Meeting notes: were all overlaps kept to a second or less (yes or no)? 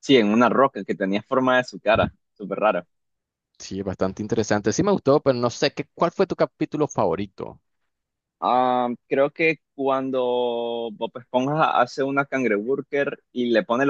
yes